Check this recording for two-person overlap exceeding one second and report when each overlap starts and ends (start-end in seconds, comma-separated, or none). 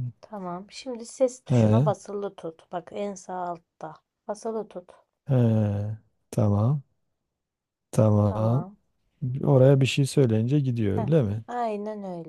none